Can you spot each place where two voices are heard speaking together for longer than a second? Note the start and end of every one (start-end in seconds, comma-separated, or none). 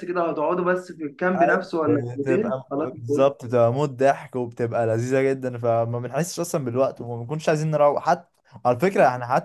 1.4-3.3